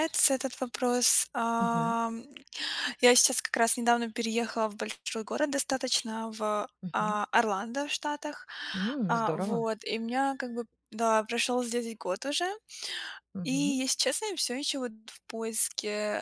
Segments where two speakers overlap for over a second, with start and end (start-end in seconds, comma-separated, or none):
none